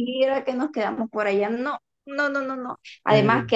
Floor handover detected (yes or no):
no